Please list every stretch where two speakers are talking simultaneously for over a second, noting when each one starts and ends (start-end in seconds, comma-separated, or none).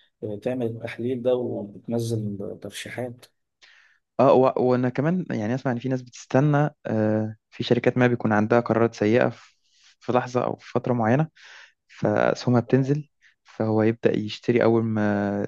none